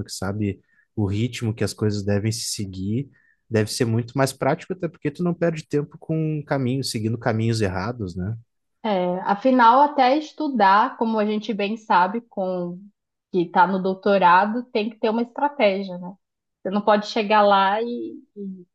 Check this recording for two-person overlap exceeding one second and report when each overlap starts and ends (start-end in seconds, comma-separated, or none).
none